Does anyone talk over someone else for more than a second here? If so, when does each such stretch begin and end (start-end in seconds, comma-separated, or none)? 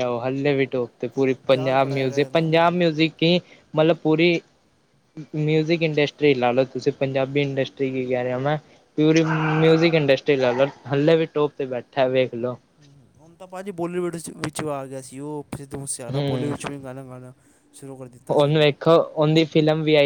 1.1-2.7